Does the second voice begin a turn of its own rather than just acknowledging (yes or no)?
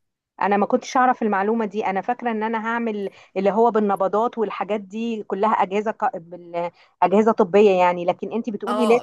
yes